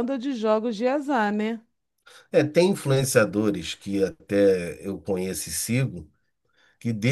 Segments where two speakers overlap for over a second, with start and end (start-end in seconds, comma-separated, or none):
none